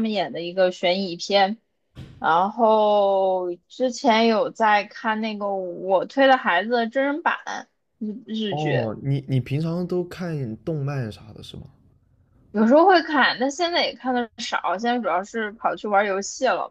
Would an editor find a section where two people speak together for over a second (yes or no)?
no